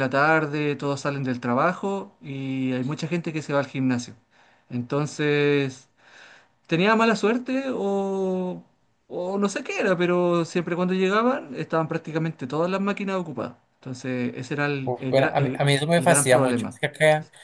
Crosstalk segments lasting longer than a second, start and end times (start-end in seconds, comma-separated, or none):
14.8-16.8